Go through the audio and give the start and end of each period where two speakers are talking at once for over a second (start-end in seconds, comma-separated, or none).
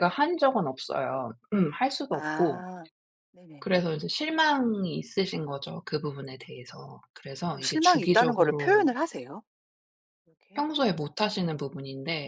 7.4-8.9